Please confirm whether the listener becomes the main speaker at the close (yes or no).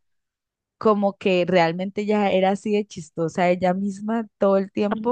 no